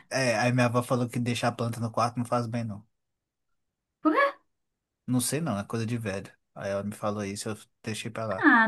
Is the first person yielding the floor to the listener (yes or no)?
yes